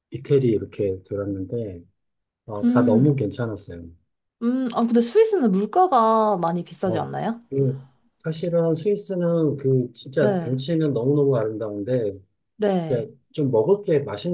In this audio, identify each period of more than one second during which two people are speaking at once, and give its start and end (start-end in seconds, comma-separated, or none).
none